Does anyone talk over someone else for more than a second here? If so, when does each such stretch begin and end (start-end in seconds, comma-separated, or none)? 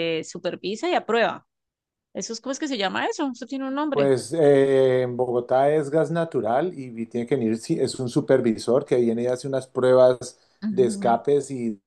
none